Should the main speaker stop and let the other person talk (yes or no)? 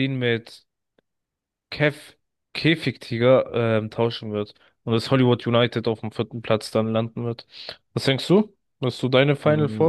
yes